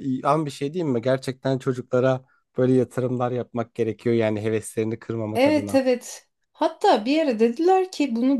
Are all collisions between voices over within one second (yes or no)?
yes